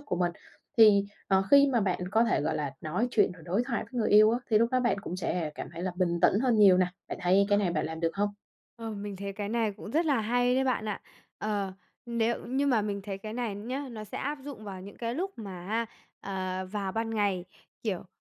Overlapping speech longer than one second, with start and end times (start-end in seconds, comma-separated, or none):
none